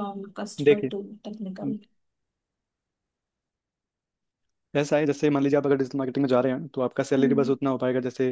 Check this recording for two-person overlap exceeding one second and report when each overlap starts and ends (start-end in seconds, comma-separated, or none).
none